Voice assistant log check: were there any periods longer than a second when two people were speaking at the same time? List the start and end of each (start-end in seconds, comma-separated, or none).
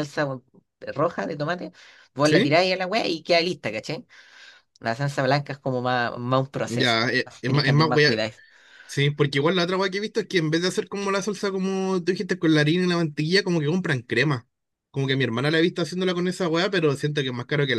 6.6-8.2